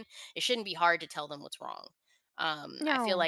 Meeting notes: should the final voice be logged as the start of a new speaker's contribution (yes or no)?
no